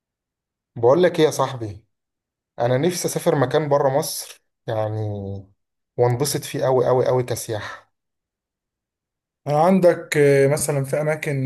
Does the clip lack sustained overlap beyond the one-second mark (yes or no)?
yes